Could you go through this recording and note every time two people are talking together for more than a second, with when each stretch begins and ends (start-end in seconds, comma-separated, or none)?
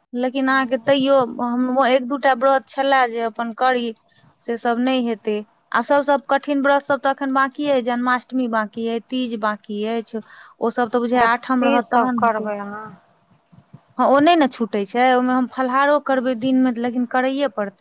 11.2-12.5